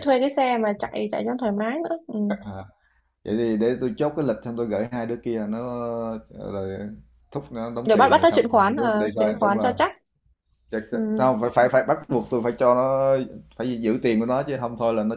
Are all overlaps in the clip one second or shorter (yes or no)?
no